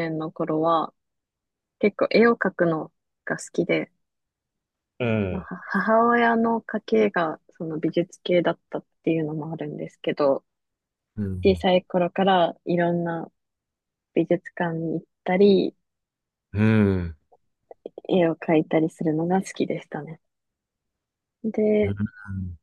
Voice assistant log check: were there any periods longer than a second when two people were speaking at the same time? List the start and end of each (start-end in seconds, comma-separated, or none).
none